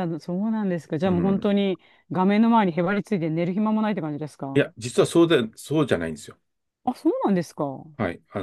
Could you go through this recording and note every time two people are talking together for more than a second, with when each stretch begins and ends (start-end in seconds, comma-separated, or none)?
none